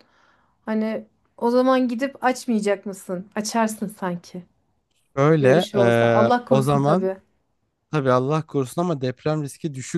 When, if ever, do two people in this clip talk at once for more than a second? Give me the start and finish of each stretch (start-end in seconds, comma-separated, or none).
5.4-7.1